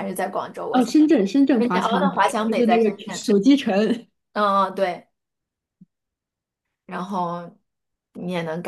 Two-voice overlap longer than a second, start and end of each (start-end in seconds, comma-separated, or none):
1.6-3.3